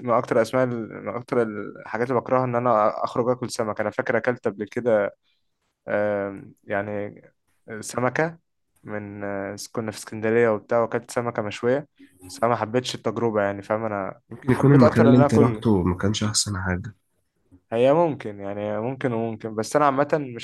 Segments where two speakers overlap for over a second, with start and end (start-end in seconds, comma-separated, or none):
14.3-15.6